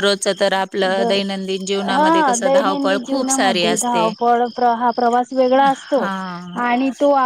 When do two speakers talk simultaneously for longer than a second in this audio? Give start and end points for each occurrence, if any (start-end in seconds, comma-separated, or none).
2.0-4.1